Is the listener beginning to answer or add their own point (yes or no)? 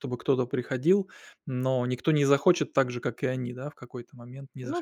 yes